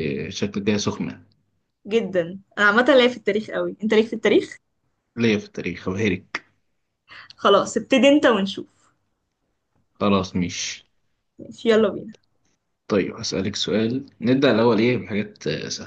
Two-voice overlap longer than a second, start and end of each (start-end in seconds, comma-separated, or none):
none